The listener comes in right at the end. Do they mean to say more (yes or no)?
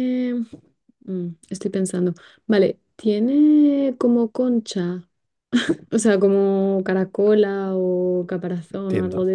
yes